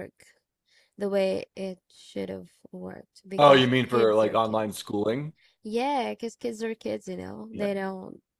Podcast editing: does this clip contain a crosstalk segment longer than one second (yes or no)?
yes